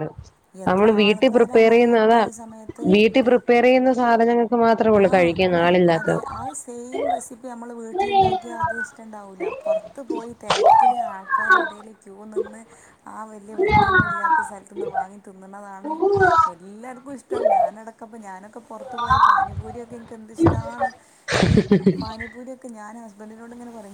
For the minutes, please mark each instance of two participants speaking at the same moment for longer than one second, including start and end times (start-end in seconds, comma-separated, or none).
0.7-2.2